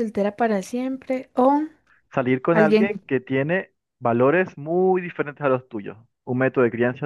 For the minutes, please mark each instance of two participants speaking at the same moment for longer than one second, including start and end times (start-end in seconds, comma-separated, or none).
none